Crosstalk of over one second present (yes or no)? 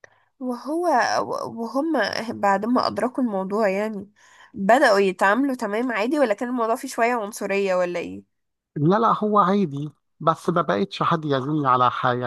no